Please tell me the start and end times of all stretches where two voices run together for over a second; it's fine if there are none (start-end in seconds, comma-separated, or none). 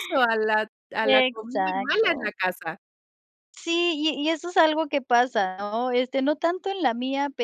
1.0-2.3